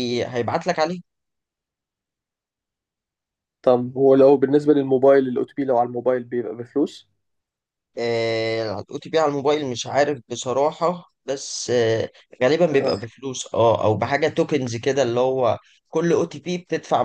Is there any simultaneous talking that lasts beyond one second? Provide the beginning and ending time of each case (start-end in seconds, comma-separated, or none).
none